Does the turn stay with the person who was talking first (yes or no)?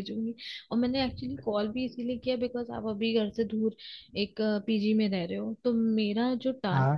yes